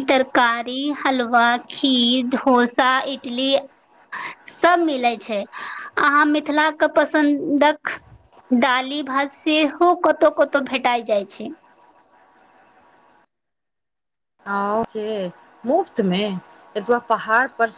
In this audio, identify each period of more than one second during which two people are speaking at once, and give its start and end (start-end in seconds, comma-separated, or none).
none